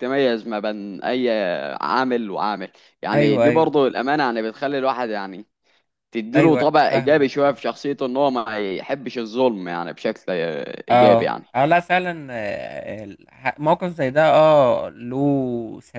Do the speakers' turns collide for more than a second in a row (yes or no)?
yes